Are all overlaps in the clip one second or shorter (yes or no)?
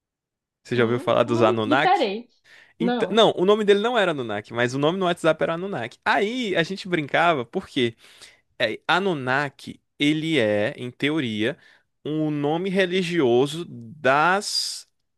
no